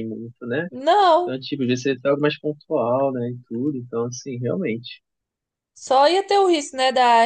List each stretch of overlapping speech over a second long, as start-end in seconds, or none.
none